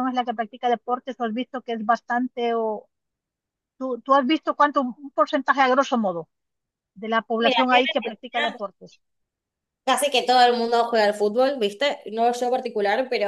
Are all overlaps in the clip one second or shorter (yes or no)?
no